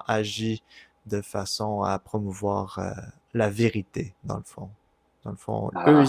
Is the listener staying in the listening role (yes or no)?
yes